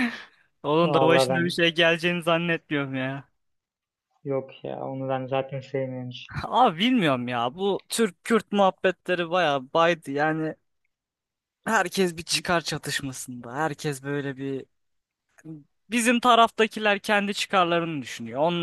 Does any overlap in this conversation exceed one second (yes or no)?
no